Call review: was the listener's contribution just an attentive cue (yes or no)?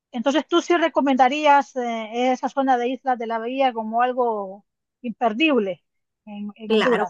no